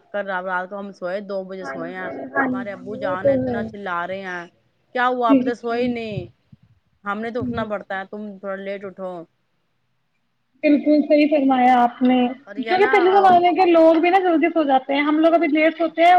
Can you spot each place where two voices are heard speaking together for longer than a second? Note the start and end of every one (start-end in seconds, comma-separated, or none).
1.6-3.3